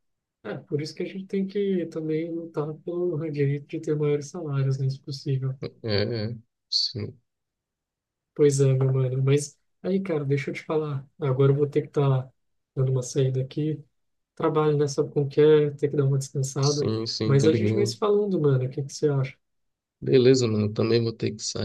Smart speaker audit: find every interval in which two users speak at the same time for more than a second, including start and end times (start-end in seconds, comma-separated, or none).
16.6-18.0